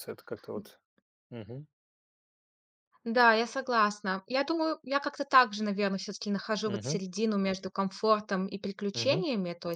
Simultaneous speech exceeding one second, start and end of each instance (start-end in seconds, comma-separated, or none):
none